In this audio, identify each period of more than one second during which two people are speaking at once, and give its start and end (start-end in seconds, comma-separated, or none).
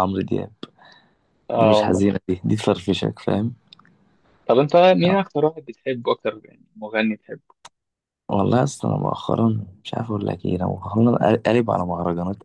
none